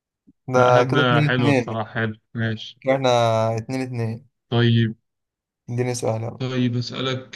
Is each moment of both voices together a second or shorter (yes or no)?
no